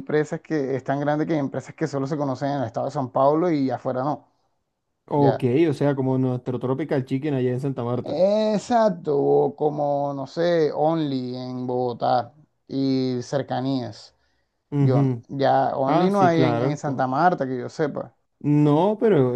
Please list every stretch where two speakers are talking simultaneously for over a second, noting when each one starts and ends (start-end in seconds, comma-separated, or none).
15.9-17.1